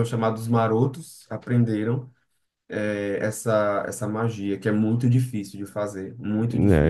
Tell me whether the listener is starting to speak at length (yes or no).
yes